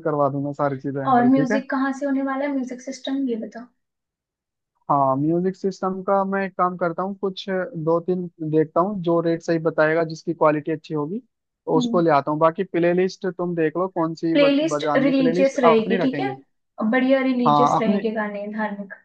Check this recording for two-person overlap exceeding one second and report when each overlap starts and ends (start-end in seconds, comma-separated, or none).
14.4-16.3